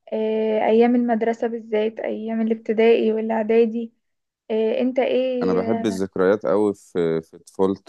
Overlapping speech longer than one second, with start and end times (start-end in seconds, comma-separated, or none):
none